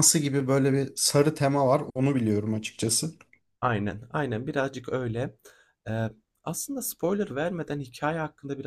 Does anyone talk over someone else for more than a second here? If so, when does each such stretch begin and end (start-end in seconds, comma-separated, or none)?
none